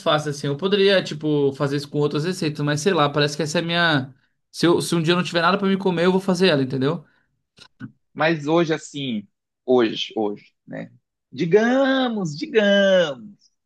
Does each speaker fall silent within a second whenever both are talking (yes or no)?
yes